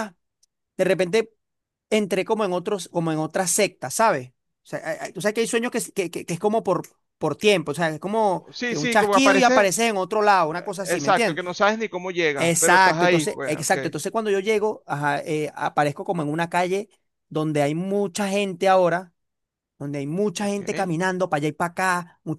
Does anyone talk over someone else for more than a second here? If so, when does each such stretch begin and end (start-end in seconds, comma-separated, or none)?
8.5-9.7, 12.4-13.8